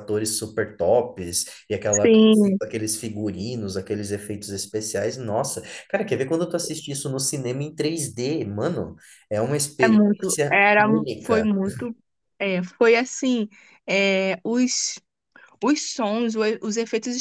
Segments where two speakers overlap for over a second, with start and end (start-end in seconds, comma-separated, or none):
9.8-11.5